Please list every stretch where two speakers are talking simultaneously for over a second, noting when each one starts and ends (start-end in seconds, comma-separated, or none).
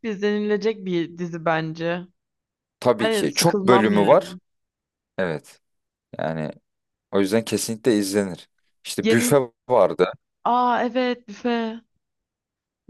3.0-4.4